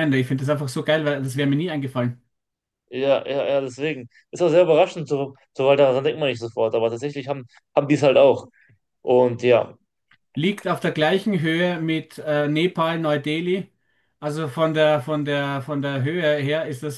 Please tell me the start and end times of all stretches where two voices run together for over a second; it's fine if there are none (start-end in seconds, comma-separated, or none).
none